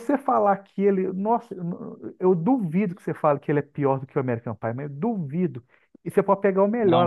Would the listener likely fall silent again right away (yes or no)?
yes